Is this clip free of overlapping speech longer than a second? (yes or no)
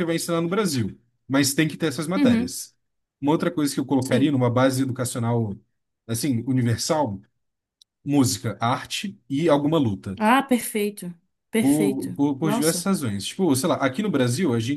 no